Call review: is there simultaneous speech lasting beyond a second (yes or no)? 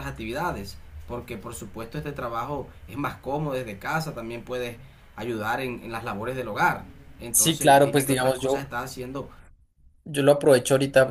yes